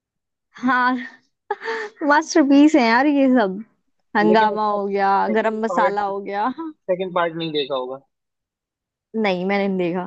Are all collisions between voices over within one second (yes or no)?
no